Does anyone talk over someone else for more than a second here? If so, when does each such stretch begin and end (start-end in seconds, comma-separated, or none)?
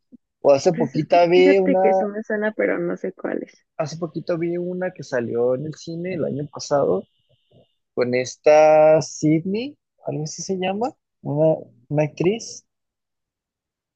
0.7-2.1